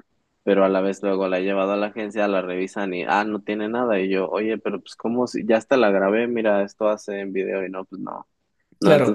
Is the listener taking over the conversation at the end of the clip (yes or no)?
no